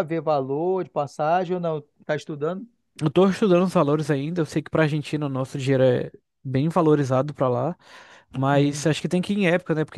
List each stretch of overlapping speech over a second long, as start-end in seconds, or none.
none